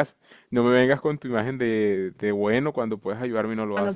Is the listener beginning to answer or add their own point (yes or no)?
yes